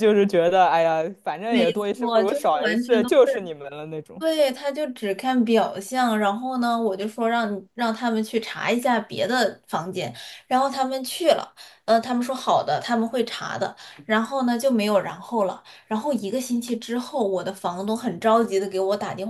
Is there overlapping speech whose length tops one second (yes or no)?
yes